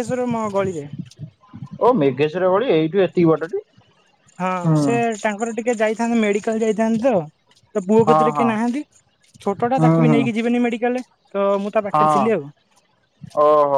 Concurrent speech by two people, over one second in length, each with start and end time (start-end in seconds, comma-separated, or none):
none